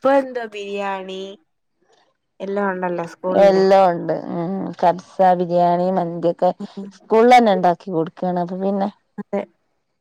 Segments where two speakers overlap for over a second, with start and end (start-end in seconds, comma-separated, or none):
none